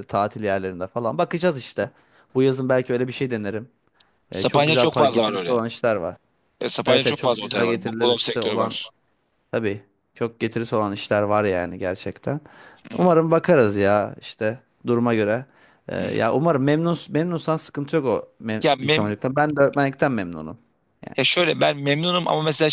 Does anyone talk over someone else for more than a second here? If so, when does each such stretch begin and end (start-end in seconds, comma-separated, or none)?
4.3-5.6, 6.8-8.8